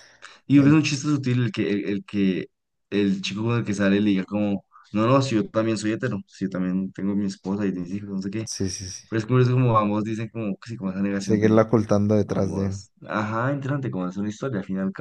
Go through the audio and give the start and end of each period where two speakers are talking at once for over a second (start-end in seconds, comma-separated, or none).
none